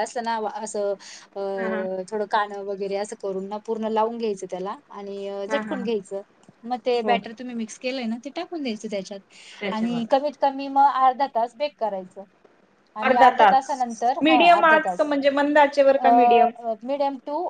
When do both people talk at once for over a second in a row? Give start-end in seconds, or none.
13.1-15.1